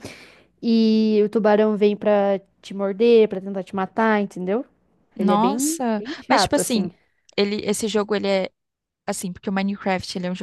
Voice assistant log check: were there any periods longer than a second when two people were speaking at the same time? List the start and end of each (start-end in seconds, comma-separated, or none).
5.2-6.9